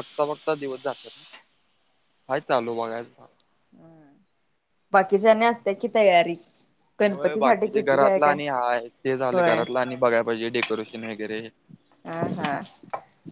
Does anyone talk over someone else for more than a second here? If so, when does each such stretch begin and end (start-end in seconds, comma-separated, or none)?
7.1-8.3